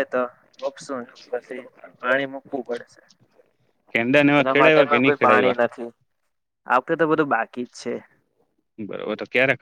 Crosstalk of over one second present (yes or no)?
no